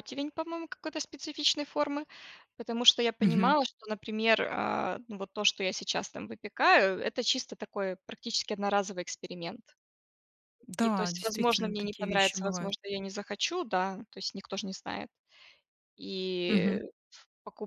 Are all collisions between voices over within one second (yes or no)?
no